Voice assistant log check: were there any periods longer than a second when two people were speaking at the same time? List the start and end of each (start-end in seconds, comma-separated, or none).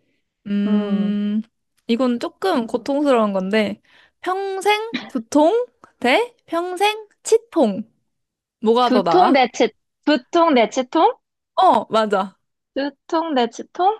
none